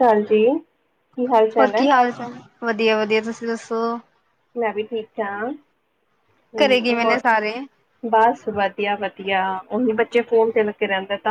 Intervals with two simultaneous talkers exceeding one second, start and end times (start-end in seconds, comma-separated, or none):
none